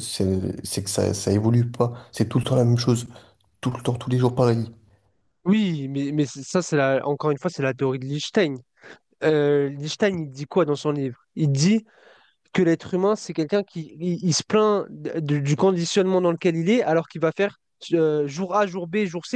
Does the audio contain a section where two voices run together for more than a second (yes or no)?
no